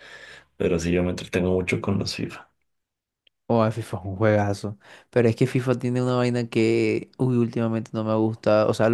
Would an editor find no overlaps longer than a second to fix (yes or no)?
yes